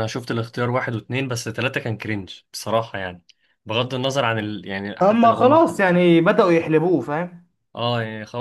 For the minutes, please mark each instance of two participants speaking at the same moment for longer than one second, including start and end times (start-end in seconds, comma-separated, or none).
none